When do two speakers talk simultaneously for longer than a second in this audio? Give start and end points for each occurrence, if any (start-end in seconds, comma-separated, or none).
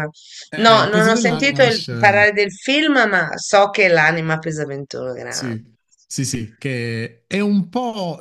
0.6-2.3